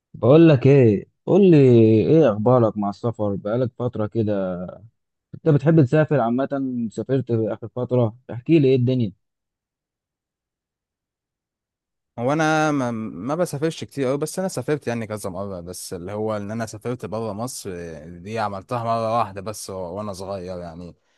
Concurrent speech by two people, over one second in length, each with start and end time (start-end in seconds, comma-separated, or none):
none